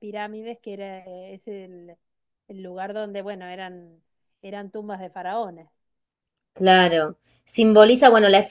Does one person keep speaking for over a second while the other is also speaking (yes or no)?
no